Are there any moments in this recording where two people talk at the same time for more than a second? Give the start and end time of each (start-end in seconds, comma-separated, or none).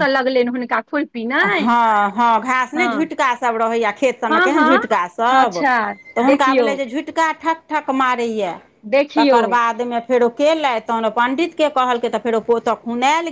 4.3-5.6